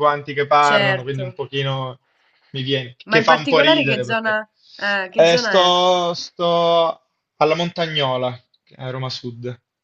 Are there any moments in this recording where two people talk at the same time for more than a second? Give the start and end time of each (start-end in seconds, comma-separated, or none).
3.1-4.4